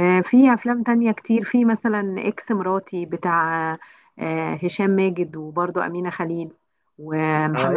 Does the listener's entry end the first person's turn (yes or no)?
yes